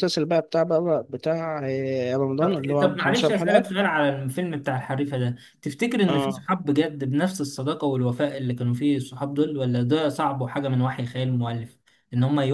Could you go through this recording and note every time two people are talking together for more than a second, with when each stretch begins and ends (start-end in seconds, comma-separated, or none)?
2.4-3.7